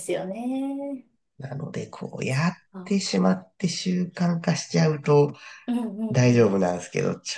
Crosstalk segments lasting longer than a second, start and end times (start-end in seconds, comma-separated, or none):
none